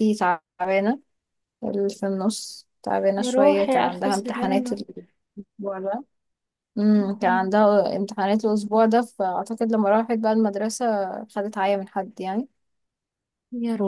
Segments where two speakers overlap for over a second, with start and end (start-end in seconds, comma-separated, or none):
3.2-4.8